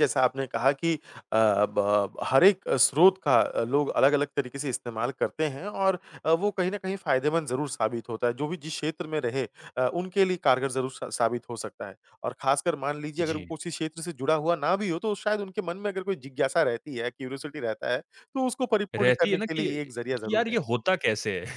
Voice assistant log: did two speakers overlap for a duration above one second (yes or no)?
yes